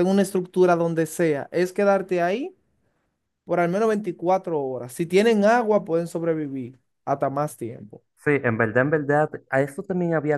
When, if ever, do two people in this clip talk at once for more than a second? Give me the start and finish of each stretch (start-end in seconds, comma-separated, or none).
none